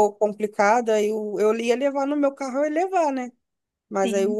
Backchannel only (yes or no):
yes